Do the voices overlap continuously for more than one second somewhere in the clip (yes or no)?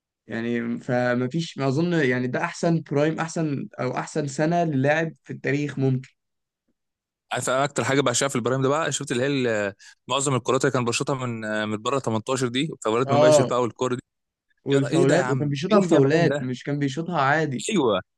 yes